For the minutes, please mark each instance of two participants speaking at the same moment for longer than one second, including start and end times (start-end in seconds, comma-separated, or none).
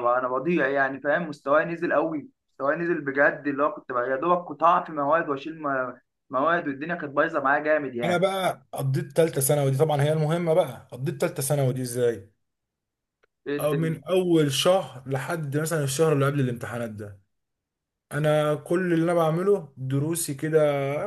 none